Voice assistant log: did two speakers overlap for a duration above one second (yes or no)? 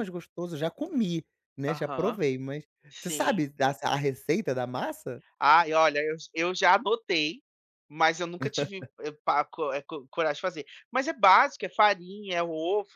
no